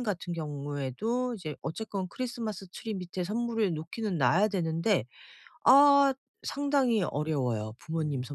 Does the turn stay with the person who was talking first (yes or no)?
no